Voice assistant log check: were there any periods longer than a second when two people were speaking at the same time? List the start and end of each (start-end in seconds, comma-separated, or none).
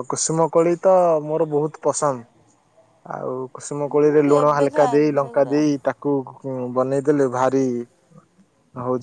3.9-5.6